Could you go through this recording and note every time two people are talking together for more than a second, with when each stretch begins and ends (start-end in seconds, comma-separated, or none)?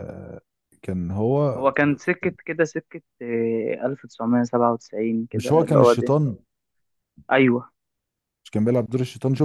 none